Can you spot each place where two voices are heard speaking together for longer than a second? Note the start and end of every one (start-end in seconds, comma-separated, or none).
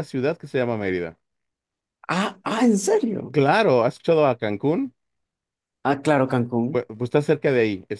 none